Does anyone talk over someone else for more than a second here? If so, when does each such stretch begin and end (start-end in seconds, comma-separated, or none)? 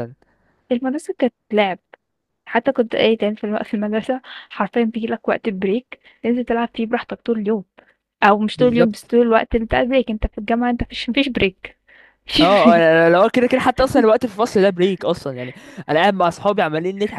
none